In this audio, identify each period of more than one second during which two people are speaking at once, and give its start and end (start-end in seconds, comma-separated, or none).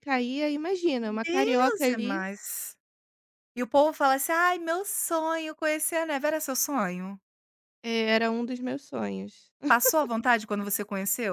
1.0-2.2